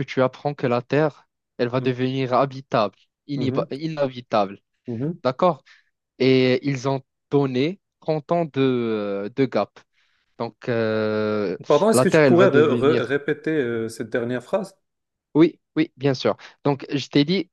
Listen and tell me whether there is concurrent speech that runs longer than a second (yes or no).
yes